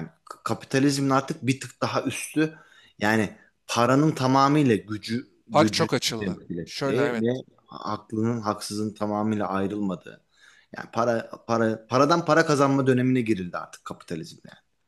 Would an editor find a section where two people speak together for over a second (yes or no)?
yes